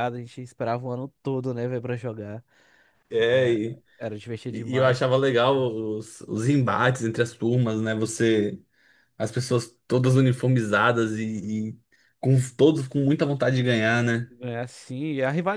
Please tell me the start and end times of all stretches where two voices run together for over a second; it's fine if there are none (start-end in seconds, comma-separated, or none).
none